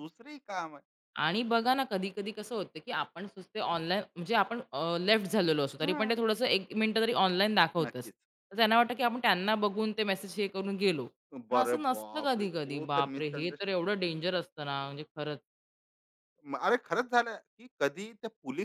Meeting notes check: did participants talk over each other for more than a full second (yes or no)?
yes